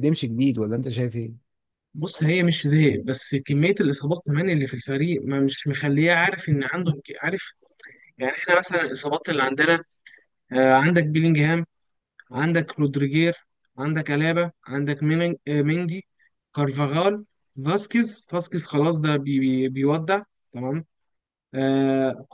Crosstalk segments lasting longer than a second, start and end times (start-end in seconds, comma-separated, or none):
none